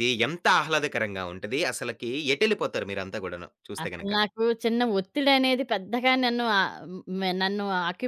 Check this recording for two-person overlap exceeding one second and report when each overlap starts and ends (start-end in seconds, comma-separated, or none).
none